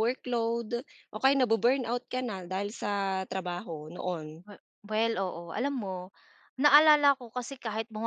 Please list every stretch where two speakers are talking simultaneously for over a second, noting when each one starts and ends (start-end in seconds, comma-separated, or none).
none